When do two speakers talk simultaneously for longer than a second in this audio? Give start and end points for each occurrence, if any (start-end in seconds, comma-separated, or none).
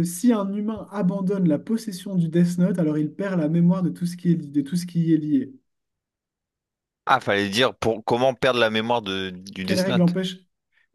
none